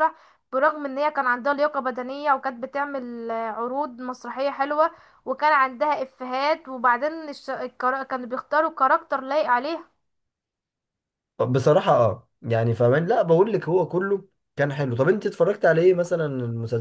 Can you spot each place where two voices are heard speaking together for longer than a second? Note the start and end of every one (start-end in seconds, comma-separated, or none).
none